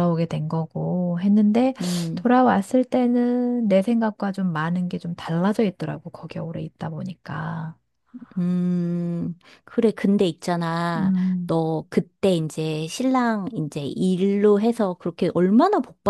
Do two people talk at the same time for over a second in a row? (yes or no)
no